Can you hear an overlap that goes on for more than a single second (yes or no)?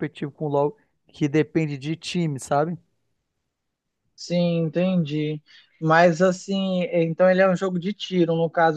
no